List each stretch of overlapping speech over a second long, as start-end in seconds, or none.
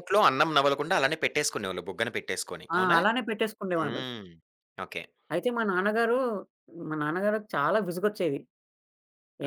none